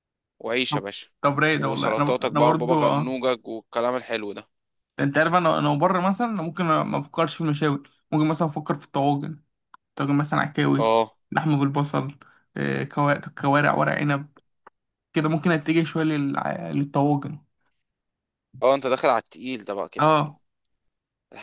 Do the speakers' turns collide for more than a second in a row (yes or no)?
yes